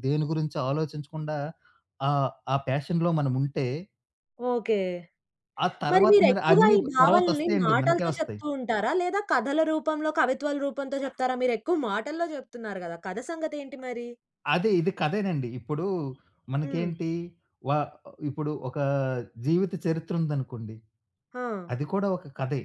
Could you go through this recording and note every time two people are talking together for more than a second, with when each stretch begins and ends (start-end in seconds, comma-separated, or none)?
5.9-8.4